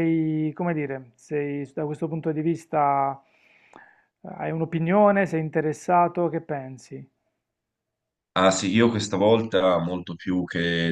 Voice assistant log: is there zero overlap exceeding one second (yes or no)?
yes